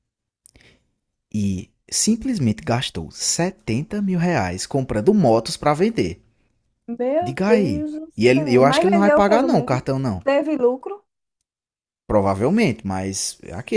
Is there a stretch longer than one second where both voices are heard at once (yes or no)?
yes